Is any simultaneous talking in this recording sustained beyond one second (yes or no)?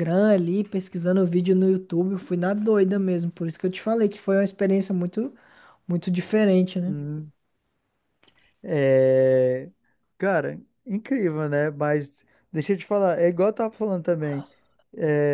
no